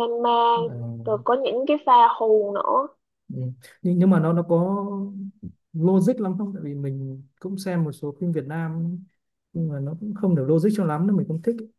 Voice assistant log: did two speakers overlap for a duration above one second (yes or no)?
no